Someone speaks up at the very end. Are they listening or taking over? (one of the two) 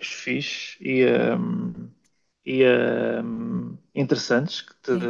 listening